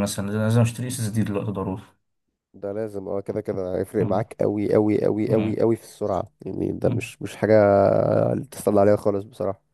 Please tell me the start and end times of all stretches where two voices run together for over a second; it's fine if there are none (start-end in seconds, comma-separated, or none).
none